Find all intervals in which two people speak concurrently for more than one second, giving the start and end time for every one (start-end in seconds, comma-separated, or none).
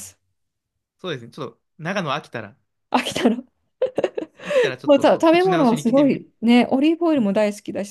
4.8-6.2